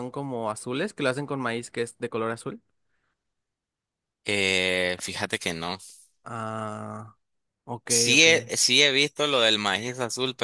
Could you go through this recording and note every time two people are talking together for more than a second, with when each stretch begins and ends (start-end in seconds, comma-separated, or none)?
none